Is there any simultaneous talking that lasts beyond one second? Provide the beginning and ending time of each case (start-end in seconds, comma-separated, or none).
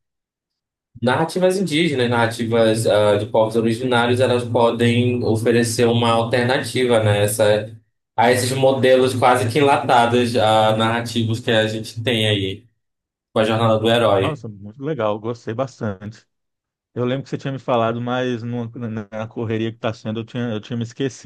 none